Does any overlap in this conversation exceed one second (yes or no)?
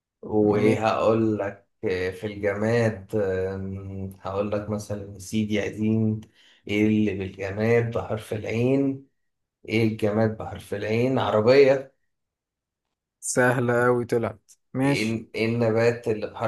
no